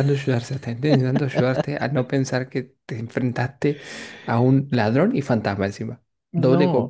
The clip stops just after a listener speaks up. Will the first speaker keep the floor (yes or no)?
no